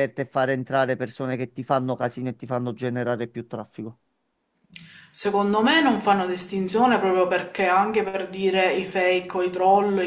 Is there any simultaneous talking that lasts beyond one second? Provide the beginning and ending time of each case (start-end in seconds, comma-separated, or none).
none